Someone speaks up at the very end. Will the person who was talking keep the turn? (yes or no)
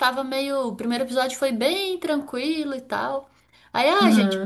yes